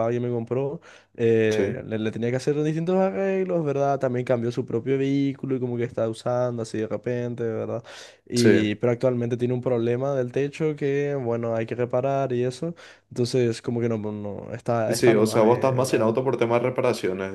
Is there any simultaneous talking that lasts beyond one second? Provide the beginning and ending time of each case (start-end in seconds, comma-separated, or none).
14.9-16.2